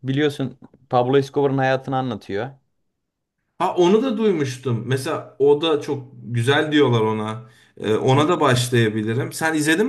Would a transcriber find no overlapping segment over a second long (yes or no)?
yes